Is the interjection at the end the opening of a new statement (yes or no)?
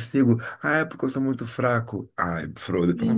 yes